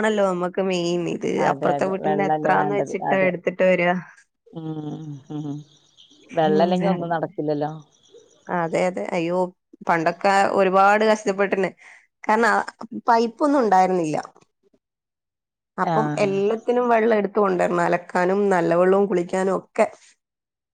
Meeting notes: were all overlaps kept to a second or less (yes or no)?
no